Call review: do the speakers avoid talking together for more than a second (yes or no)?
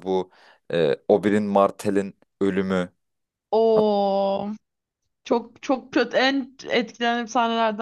yes